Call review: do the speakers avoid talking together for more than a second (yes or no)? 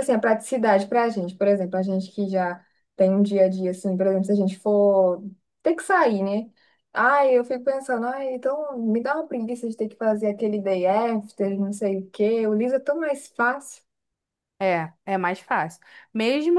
yes